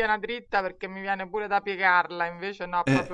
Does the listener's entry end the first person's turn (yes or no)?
no